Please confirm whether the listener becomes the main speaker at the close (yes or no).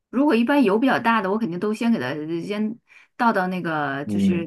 no